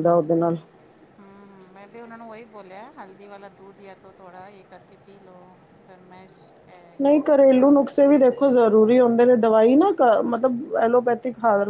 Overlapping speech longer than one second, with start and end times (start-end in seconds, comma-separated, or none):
none